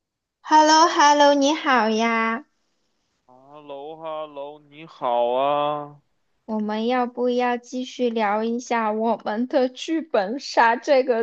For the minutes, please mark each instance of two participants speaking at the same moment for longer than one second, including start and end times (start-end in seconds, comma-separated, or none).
none